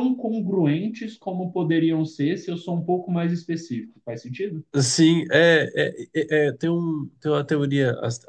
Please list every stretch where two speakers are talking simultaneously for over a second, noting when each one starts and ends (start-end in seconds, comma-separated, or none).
none